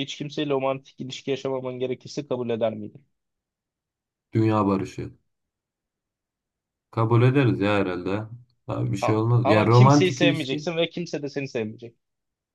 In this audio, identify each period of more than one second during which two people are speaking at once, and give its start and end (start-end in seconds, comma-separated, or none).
9.0-10.7